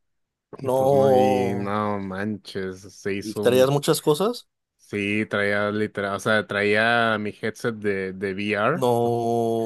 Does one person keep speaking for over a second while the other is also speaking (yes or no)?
yes